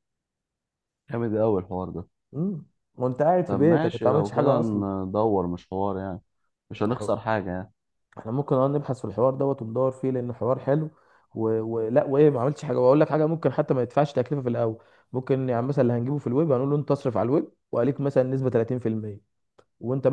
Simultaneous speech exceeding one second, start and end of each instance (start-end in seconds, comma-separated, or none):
3.5-4.8